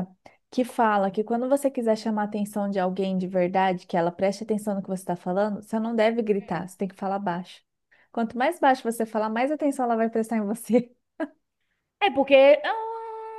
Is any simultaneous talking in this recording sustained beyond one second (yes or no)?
no